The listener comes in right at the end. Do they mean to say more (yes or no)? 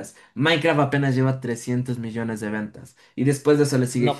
no